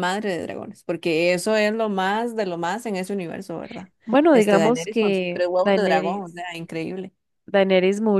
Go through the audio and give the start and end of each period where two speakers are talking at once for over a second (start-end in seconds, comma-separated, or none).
4.3-6.4